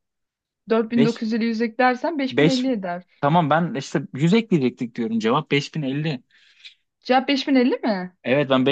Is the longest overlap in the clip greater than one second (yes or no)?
no